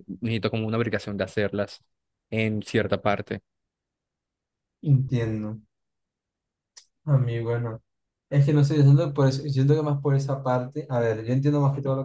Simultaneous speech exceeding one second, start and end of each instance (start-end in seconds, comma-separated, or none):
none